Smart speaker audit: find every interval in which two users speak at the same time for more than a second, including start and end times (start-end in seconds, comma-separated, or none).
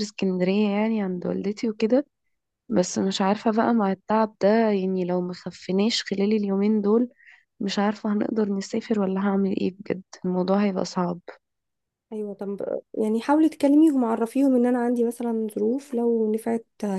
none